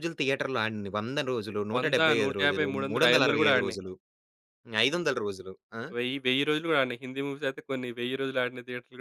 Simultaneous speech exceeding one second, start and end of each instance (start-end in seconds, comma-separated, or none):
1.8-3.8